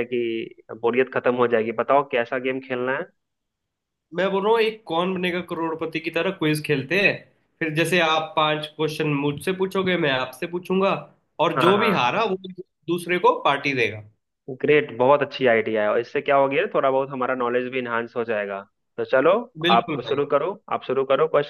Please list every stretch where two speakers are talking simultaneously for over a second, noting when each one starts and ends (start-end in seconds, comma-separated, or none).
none